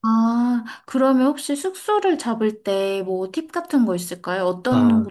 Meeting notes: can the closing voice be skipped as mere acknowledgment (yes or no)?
no